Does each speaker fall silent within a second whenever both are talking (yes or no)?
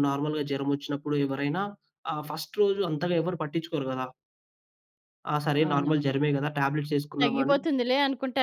yes